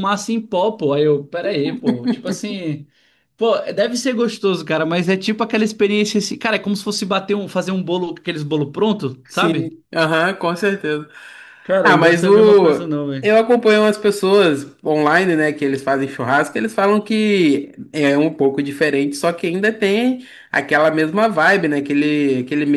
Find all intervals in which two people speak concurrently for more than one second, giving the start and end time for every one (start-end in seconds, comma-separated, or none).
11.8-13.3